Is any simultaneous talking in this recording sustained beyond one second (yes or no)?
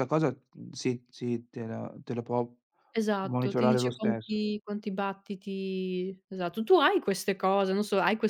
yes